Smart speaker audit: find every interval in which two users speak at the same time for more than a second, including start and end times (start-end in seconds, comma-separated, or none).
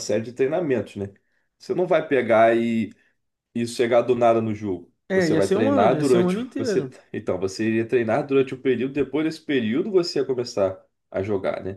5.1-7.0